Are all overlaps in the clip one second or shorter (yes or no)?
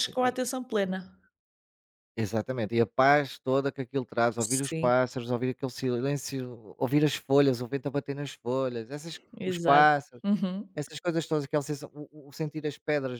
yes